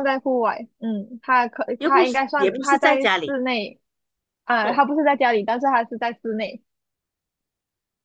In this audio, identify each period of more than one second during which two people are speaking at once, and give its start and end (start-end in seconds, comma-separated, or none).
1.8-3.4